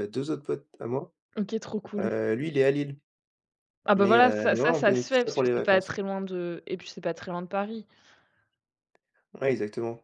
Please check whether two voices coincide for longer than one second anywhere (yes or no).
yes